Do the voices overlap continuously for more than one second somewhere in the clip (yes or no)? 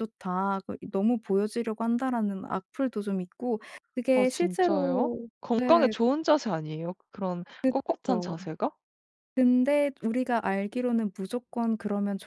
yes